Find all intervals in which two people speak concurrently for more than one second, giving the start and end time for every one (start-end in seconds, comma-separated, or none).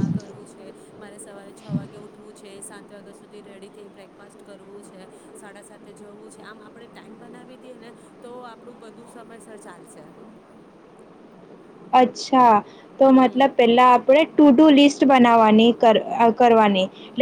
none